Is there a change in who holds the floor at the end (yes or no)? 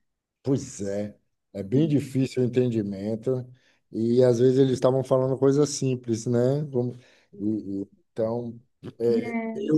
no